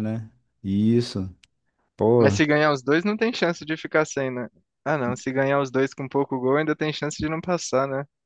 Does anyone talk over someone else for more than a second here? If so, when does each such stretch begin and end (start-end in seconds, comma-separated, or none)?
none